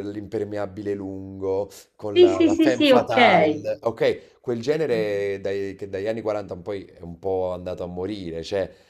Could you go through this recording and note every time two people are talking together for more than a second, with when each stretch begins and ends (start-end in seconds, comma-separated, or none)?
2.1-3.7